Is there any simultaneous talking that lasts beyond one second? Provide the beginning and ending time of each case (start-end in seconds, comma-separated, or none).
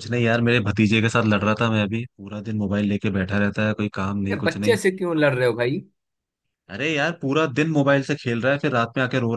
none